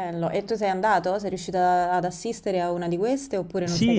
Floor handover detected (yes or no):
yes